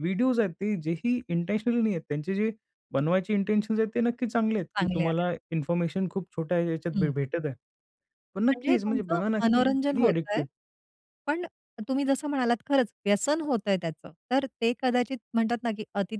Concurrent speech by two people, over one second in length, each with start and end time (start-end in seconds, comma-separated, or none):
8.5-10.4